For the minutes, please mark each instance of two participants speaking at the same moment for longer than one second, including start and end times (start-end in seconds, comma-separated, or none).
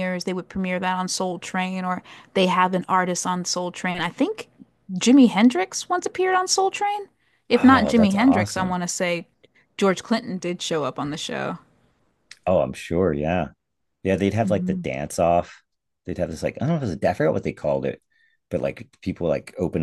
7.6-8.8